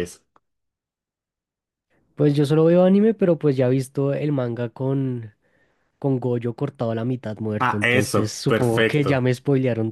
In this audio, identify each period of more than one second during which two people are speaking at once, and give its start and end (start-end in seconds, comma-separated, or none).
7.6-9.3